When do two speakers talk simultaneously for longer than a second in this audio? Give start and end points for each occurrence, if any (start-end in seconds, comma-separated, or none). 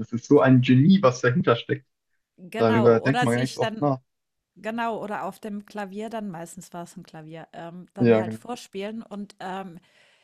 2.6-3.9